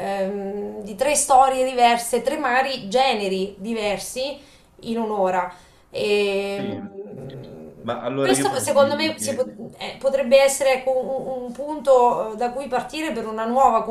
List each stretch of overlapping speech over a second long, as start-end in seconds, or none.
8.2-9.4